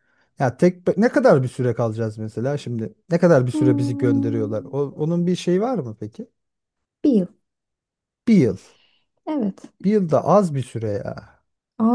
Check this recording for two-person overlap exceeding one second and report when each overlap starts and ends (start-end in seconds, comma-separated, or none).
3.5-4.7